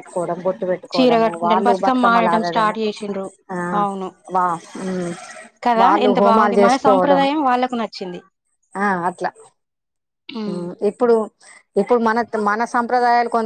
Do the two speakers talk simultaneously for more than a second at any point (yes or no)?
yes